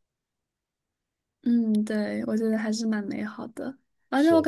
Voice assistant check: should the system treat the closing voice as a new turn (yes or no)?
no